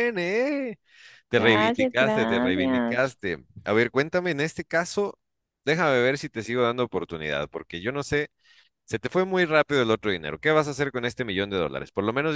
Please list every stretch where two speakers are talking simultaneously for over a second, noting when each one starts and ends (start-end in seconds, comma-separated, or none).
1.4-3.2